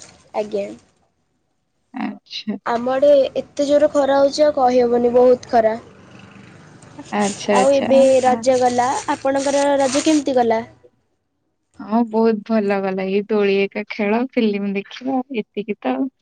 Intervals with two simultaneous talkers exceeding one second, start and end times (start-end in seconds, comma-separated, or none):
none